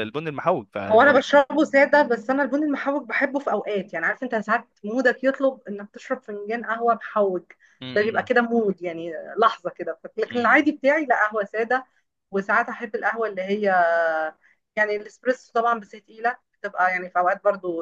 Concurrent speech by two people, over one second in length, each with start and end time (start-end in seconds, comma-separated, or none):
none